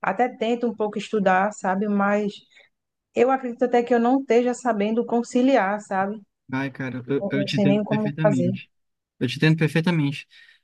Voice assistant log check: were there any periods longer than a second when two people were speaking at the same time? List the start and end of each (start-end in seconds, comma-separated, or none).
7.2-8.6